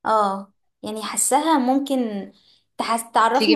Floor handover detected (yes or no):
no